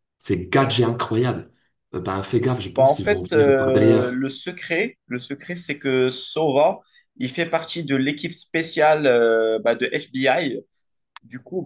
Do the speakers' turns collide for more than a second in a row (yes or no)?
yes